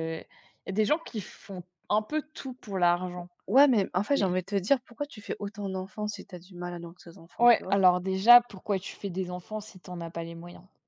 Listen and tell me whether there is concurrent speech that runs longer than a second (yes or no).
no